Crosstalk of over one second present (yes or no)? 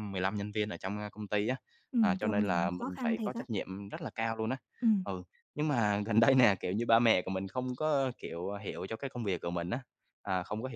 yes